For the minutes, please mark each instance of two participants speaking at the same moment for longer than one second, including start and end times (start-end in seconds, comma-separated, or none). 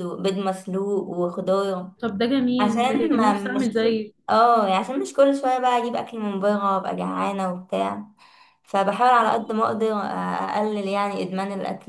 2.6-4.2